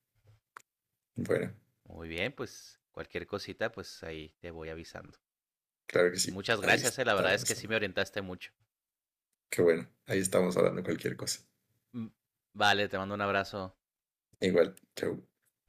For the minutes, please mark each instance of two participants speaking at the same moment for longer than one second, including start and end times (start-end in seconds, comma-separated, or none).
6.1-7.8